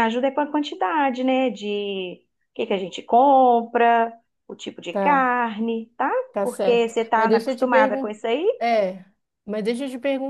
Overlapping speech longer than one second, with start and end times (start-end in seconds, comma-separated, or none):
6.3-8.2